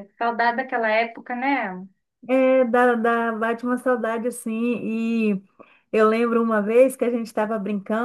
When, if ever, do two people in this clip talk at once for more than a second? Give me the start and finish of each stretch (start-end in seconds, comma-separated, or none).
none